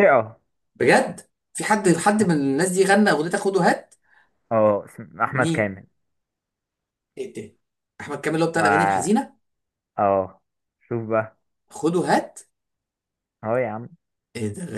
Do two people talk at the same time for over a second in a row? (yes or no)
no